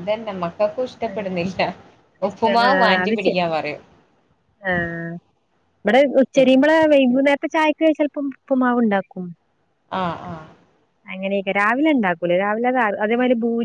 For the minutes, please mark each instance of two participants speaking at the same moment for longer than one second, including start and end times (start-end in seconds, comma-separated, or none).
none